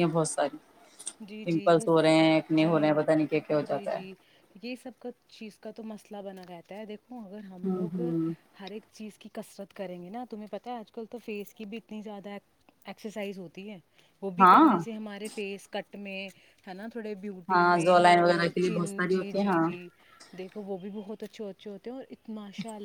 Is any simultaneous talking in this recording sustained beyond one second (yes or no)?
yes